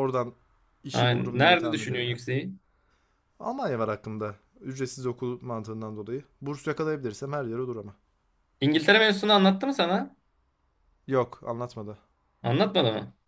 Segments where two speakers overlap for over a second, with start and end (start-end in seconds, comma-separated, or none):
0.9-2.2